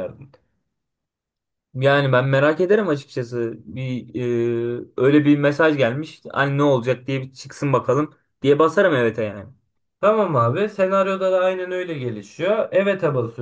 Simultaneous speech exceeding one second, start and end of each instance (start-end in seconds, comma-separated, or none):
none